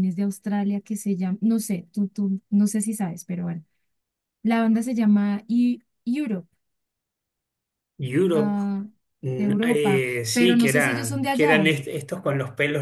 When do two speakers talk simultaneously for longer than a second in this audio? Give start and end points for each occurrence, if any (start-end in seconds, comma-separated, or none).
9.4-11.8